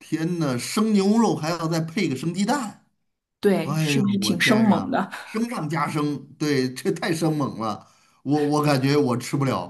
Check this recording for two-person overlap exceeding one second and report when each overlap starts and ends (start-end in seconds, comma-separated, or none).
3.6-5.1